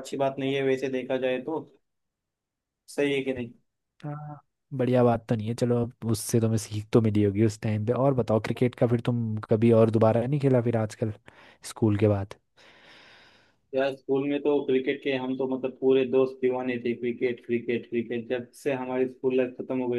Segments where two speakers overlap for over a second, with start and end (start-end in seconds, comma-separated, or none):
none